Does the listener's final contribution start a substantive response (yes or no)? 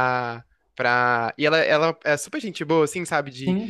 no